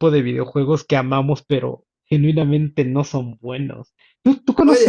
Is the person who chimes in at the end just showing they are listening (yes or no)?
no